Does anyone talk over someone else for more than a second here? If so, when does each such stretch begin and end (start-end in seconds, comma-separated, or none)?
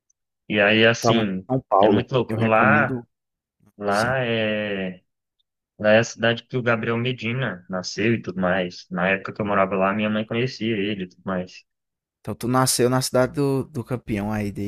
1.0-3.0